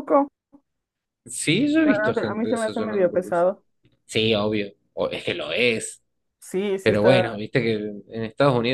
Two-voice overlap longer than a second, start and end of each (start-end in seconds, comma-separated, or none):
1.8-3.4